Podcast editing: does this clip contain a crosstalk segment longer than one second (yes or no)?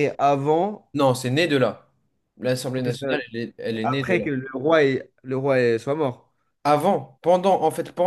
no